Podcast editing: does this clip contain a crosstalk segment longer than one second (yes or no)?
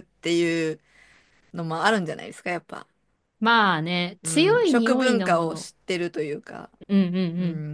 yes